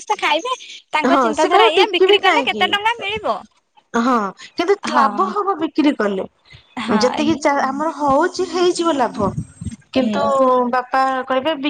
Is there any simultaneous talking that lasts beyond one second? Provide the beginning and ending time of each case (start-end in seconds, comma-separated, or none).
1.1-3.1